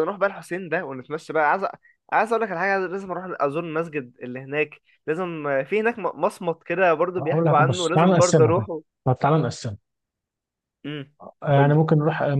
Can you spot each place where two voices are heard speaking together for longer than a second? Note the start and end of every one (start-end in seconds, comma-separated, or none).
7.2-8.6